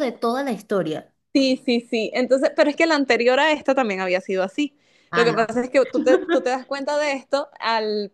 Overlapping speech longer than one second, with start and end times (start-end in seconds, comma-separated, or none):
none